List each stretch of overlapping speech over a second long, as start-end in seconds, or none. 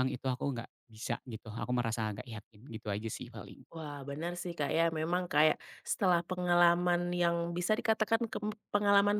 none